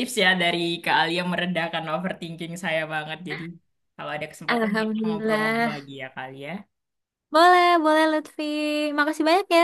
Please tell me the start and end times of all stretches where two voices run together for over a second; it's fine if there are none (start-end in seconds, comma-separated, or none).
4.5-5.9